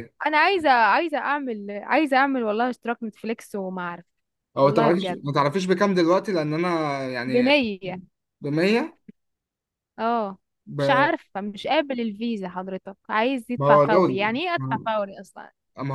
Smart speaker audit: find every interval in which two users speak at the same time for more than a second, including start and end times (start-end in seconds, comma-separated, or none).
13.6-15.2